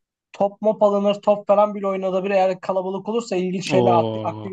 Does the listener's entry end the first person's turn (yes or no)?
no